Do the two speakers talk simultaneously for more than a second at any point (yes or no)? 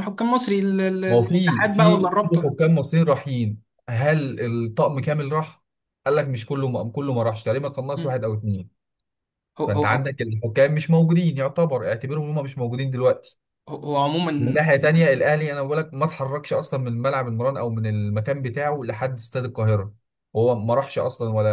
yes